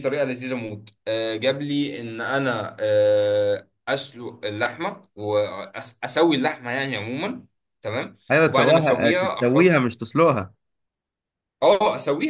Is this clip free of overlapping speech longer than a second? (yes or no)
no